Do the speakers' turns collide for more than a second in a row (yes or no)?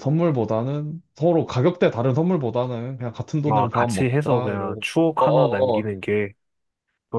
yes